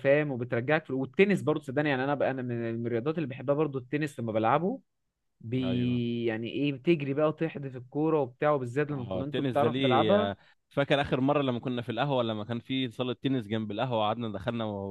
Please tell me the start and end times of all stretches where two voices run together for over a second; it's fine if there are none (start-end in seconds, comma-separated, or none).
8.9-10.3